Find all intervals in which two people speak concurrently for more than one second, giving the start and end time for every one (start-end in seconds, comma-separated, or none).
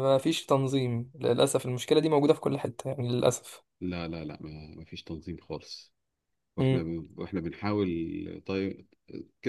none